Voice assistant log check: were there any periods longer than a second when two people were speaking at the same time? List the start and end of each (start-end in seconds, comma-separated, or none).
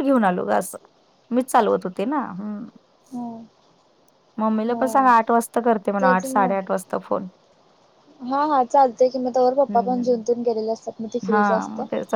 none